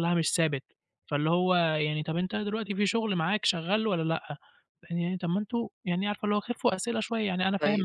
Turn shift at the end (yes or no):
no